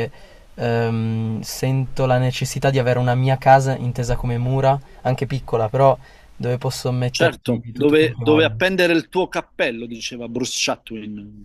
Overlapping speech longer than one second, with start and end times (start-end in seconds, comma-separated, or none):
7.1-8.5